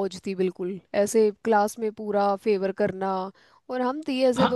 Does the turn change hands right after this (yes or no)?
yes